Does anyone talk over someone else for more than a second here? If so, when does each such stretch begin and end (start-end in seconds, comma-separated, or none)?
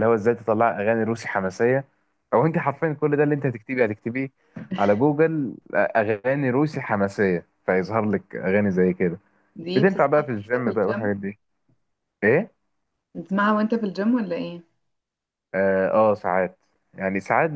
9.8-11.1